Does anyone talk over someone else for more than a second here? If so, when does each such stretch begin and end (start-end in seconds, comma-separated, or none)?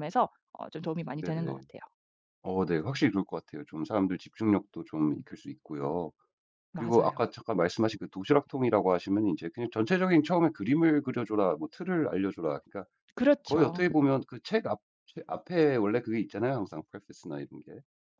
none